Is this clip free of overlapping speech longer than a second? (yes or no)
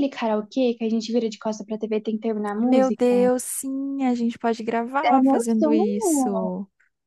no